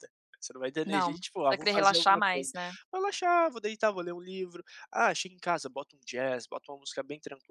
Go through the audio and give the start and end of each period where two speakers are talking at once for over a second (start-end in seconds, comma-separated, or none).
0.8-2.5